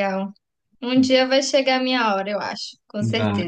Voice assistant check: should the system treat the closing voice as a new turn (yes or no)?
yes